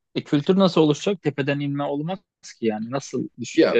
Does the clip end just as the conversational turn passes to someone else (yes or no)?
yes